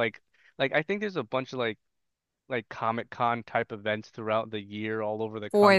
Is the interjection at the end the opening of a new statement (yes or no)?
no